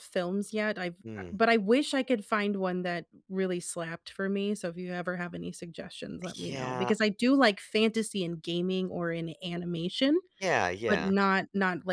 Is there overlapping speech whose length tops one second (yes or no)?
no